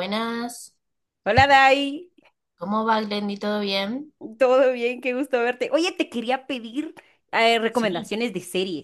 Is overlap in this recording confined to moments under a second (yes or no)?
yes